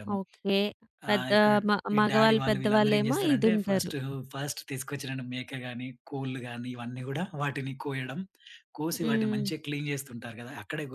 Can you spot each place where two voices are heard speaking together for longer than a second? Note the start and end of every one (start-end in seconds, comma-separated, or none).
2.0-3.9